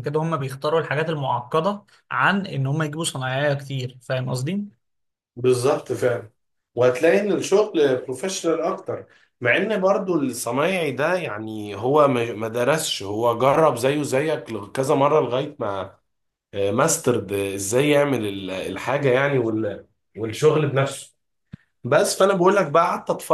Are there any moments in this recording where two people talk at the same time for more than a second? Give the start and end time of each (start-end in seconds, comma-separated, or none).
none